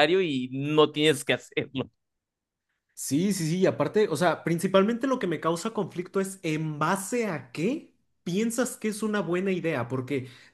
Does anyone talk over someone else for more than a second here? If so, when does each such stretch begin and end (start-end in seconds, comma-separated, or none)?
none